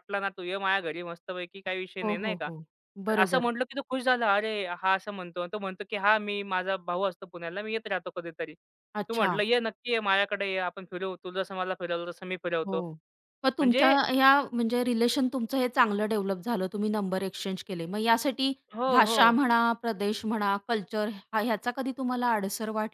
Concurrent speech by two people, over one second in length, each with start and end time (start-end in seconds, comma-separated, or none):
none